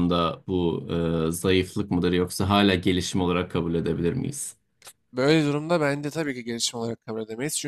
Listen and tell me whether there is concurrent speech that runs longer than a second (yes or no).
no